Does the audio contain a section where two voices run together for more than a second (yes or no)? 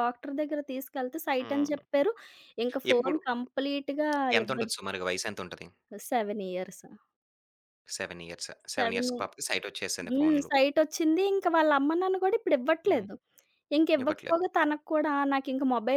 no